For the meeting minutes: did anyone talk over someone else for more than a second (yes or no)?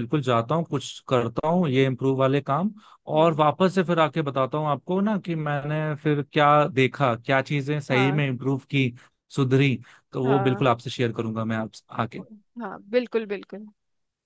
no